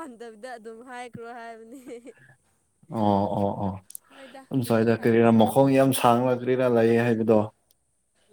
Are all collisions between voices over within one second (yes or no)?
yes